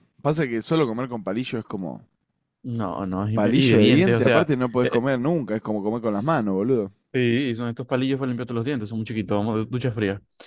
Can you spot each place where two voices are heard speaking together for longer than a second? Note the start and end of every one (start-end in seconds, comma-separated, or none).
3.3-5.0